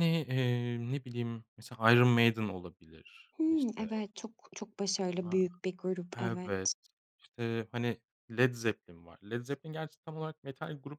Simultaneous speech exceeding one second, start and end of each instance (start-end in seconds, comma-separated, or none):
none